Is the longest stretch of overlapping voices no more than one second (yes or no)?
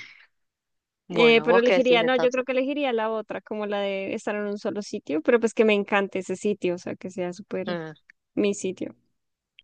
no